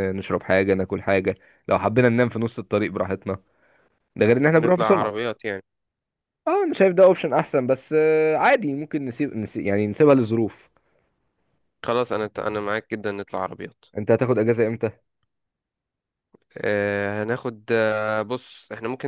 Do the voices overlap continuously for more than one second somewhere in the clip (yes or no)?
no